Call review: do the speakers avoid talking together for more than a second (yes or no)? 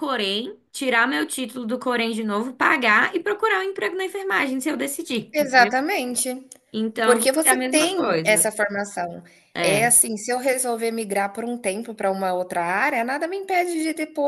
no